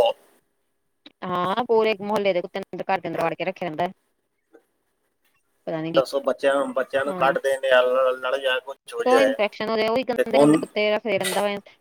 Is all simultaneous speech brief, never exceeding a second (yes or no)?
yes